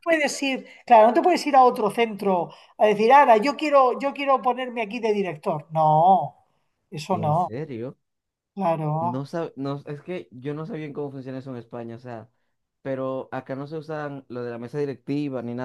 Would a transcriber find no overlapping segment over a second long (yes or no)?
yes